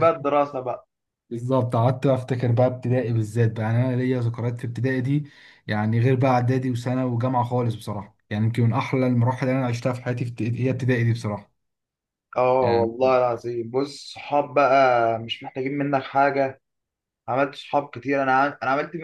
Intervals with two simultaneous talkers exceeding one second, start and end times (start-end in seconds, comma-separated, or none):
none